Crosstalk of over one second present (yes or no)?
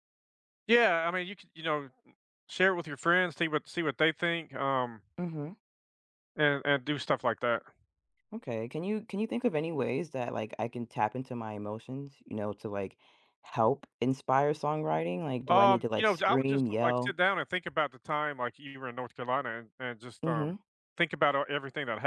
yes